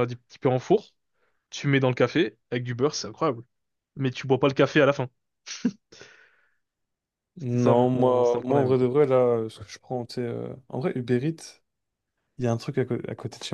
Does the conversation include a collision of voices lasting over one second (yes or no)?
yes